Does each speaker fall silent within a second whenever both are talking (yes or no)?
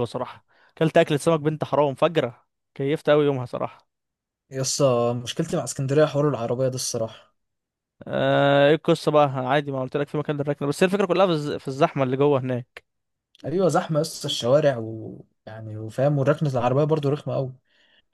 yes